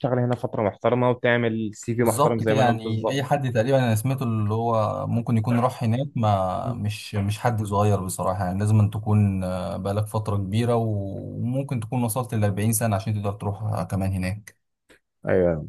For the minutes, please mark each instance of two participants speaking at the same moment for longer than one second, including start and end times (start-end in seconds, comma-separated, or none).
2.0-3.4